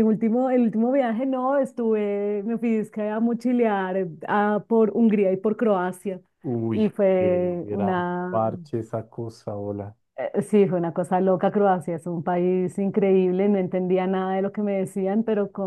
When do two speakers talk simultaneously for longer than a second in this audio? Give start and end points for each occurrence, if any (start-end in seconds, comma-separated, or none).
6.7-8.4